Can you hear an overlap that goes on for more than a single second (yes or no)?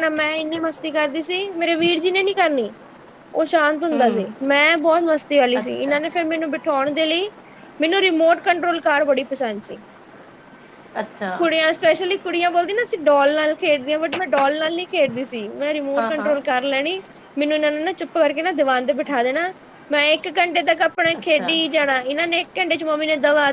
no